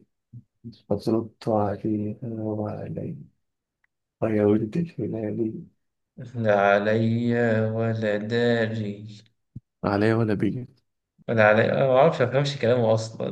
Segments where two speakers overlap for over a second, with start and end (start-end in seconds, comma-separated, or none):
none